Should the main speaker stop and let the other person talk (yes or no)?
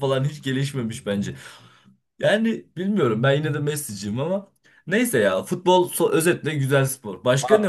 yes